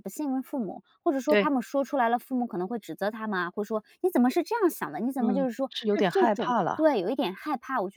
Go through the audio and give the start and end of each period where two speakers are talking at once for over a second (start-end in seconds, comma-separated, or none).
5.2-6.9